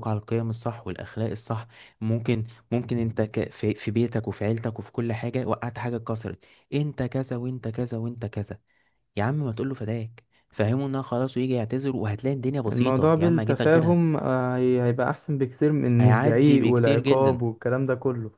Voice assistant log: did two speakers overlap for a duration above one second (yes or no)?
yes